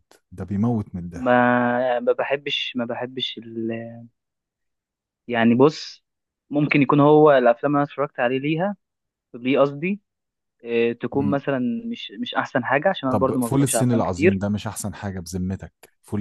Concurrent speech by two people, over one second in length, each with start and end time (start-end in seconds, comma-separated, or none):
13.1-14.4